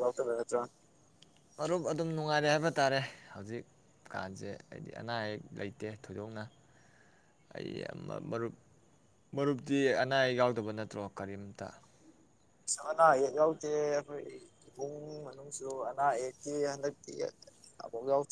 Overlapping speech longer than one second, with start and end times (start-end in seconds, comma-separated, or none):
none